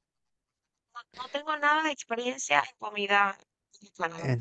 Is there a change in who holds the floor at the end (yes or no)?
yes